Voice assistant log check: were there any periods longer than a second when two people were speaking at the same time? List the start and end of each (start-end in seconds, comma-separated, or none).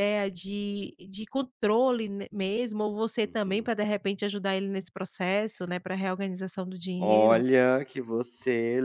none